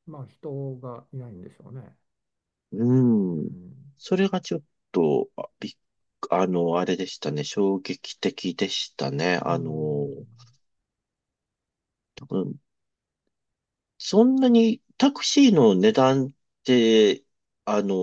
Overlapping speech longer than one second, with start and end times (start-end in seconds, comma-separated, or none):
none